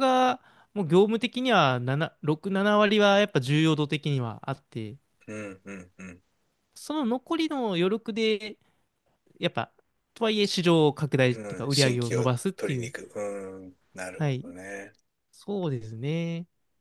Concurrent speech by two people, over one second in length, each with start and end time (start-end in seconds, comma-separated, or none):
11.3-12.9